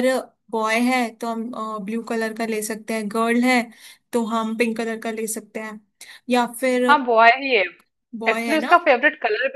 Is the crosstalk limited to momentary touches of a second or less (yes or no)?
yes